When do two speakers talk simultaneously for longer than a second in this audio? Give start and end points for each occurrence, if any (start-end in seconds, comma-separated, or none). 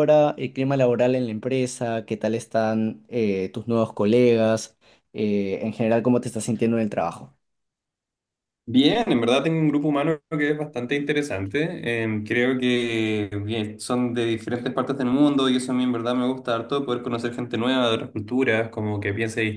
none